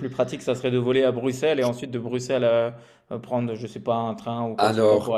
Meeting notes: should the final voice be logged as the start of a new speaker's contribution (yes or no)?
yes